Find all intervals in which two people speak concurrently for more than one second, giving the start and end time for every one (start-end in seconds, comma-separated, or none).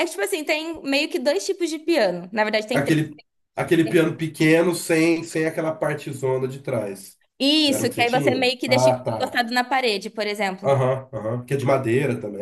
7.7-9.4